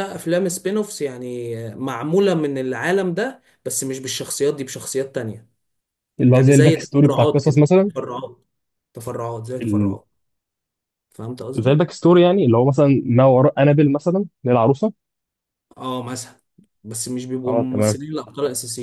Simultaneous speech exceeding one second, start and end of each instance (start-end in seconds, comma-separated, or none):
6.3-7.9